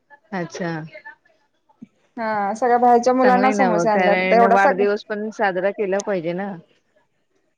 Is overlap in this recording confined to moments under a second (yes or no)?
no